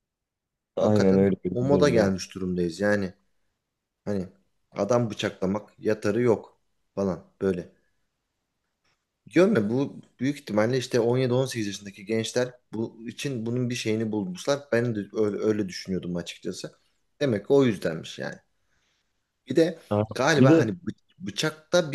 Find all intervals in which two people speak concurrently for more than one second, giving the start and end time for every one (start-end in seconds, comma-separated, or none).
0.8-2.1